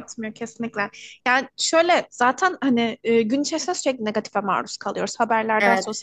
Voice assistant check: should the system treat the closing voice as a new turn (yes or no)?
no